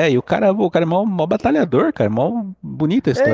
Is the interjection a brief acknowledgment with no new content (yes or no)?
no